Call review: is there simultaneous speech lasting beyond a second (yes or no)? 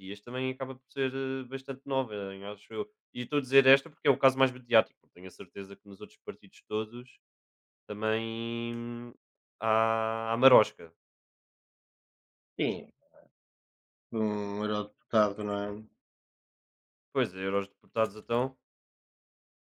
no